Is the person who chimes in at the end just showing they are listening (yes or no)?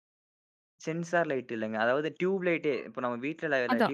no